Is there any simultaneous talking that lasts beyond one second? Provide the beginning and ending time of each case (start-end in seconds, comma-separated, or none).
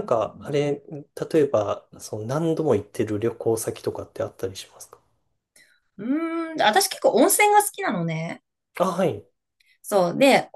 none